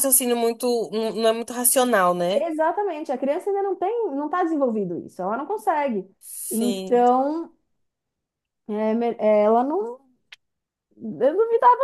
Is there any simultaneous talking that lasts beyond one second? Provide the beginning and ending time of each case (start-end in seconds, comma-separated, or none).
none